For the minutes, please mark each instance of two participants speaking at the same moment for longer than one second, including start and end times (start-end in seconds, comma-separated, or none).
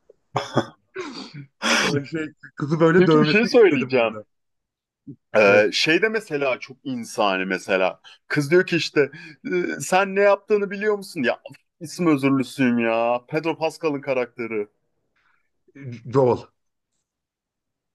3.0-4.2